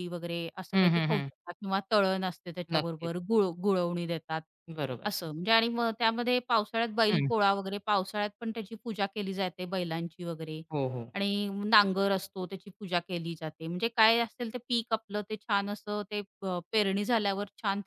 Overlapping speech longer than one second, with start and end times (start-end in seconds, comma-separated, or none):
none